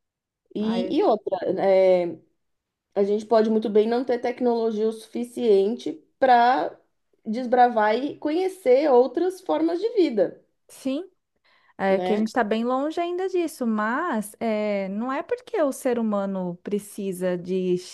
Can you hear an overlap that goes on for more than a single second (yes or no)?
no